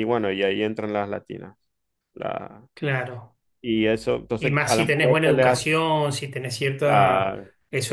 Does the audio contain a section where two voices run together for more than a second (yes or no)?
yes